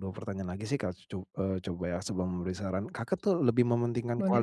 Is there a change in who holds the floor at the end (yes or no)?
no